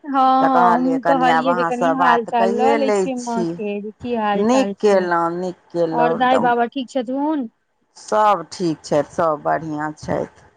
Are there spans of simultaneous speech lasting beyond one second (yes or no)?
yes